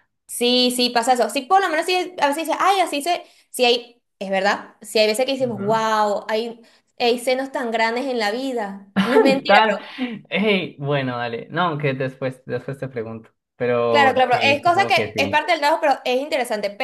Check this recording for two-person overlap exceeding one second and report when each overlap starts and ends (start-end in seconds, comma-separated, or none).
13.9-15.5